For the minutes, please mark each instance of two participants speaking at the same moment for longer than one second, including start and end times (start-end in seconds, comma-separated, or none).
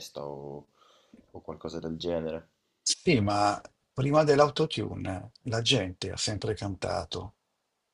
none